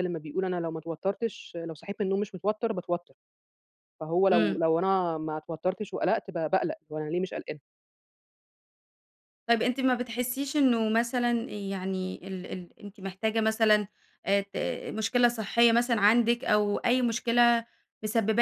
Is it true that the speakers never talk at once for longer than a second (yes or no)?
yes